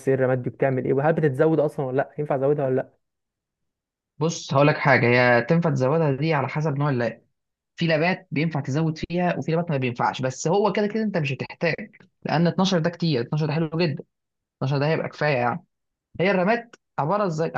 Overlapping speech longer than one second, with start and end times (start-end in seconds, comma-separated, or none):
none